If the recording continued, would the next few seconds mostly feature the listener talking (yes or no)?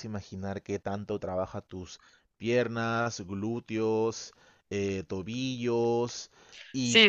yes